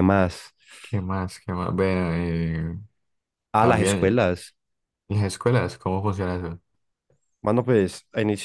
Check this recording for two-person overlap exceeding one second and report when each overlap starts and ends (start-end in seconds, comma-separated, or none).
none